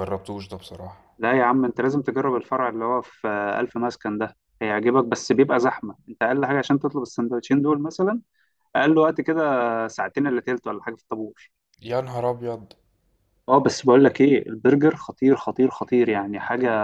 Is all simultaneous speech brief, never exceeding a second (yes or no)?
yes